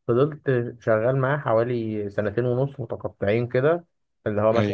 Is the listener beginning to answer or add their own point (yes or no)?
no